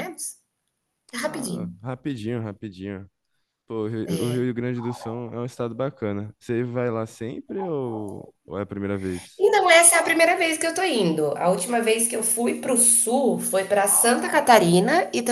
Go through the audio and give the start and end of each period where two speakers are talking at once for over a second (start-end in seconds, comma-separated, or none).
none